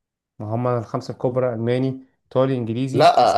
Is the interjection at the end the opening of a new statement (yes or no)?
yes